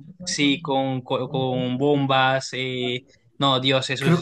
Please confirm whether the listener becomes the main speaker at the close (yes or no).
yes